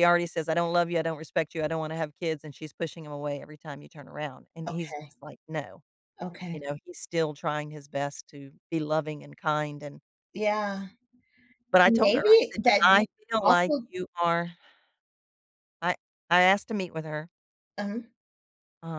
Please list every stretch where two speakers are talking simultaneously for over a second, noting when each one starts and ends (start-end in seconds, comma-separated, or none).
11.8-13.9